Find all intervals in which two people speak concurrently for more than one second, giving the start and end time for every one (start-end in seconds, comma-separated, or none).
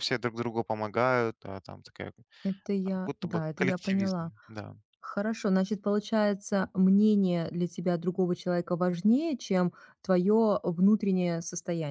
2.8-4.3